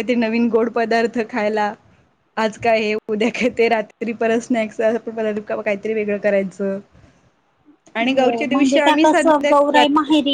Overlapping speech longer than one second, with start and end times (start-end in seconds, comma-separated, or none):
8.1-9.8